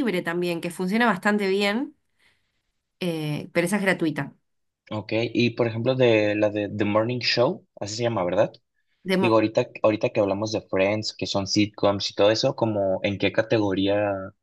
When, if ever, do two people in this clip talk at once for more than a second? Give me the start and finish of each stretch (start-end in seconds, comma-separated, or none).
none